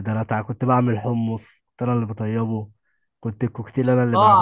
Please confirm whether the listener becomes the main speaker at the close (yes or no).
yes